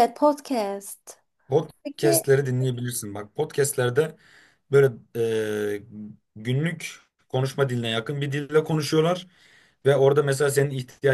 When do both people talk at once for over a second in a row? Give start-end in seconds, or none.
none